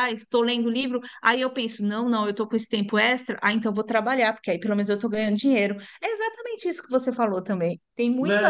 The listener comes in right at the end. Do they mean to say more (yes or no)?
yes